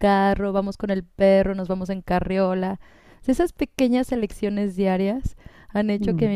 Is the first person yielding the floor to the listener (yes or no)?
no